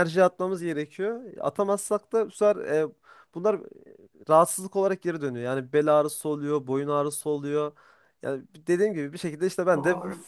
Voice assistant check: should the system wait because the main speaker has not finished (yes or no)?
yes